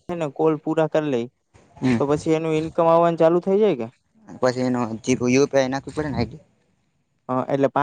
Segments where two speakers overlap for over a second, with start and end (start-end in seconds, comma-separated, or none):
none